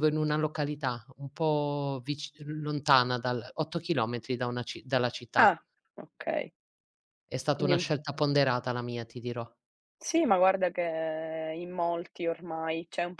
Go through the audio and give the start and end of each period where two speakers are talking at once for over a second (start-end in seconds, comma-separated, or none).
none